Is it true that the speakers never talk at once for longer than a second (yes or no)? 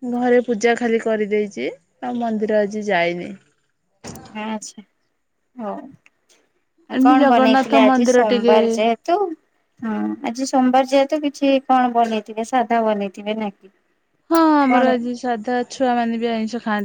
no